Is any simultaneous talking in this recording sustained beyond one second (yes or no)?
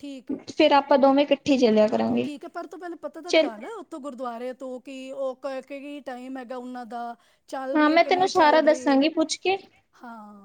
yes